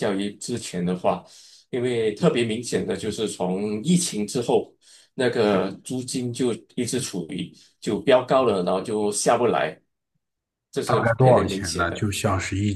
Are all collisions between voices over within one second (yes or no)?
no